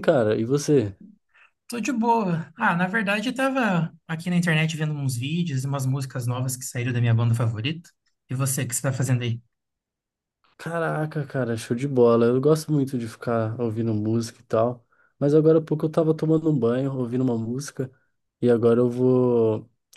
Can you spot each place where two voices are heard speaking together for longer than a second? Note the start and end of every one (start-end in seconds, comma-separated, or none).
none